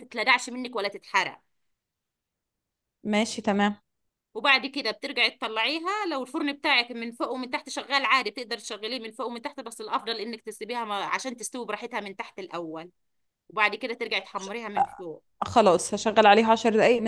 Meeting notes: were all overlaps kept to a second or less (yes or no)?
yes